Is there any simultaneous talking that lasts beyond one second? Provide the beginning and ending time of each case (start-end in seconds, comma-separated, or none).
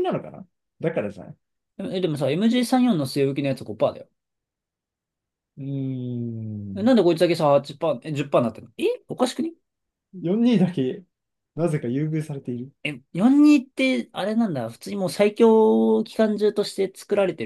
none